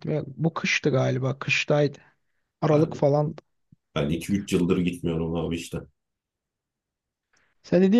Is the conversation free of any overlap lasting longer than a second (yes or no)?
yes